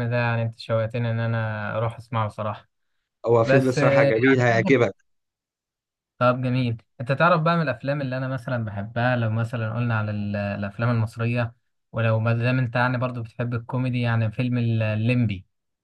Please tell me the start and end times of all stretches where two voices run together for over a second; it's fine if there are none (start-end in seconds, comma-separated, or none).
3.4-4.7